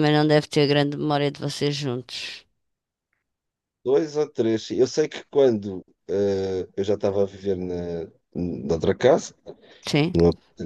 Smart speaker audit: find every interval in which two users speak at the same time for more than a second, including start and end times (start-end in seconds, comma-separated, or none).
none